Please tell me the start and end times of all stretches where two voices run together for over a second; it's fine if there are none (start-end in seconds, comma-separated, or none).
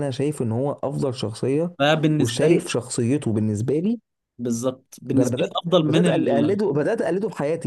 5.1-6.6